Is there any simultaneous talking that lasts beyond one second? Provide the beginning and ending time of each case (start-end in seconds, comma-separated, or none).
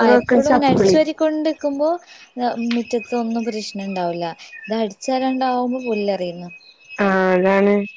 none